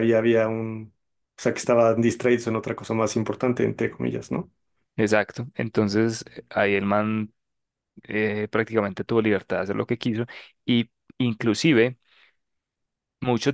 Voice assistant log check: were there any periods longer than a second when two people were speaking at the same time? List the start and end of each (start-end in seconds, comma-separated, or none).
none